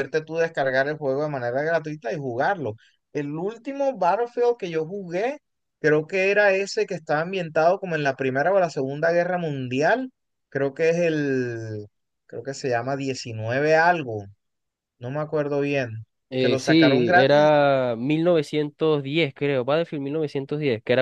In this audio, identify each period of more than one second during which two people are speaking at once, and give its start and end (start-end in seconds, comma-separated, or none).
16.3-17.5